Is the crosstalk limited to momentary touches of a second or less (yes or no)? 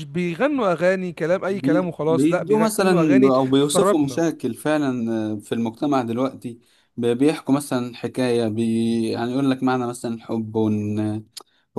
no